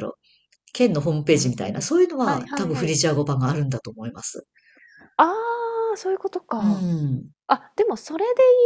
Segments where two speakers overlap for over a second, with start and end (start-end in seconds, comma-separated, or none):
1.3-2.9